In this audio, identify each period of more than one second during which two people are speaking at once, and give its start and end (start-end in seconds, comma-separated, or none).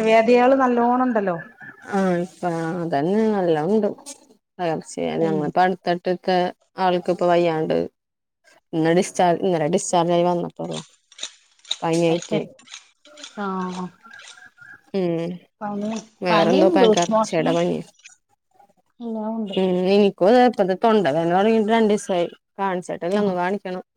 16.3-17.5